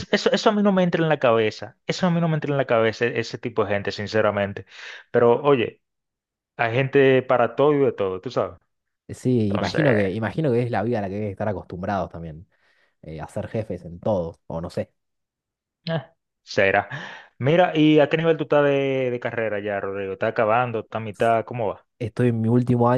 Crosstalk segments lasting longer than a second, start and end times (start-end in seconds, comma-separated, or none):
none